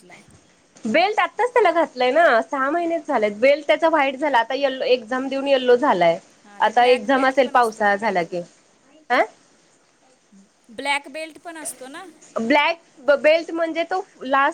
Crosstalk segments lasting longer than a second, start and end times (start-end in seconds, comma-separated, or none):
6.7-8.3